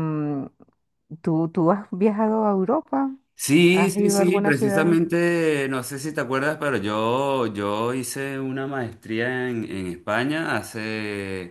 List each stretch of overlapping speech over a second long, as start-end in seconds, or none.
3.7-5.0